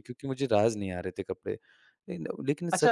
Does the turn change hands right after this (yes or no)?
yes